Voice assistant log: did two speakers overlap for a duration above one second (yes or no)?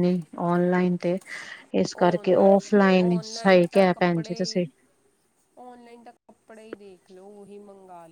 yes